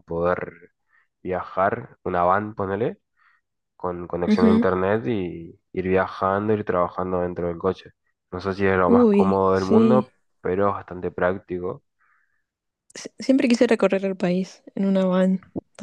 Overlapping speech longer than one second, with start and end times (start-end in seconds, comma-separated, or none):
8.9-10.1